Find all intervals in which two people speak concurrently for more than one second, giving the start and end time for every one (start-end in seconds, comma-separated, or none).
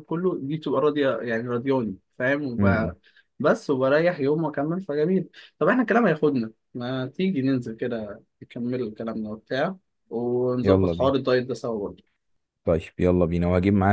none